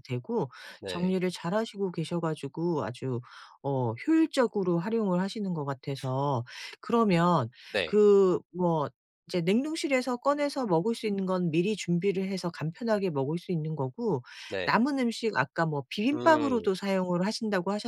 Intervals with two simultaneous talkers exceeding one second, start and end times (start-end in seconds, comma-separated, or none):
none